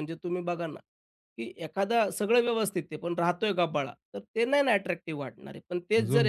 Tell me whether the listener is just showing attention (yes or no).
yes